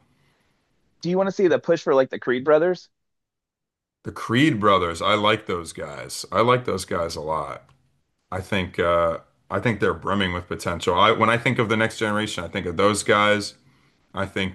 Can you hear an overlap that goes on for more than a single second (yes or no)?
no